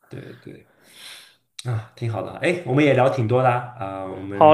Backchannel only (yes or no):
no